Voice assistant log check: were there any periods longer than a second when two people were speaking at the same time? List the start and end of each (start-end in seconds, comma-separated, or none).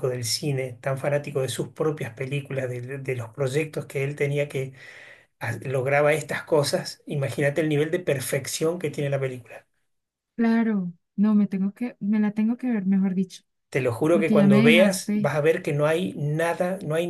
14.1-15.3